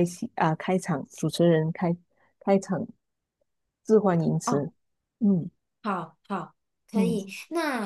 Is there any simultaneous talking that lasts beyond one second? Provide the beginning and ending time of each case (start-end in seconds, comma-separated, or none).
none